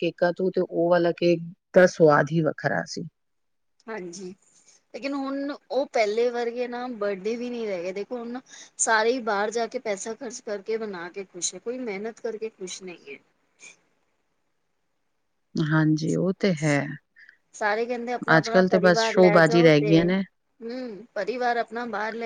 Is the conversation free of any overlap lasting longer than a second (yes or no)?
no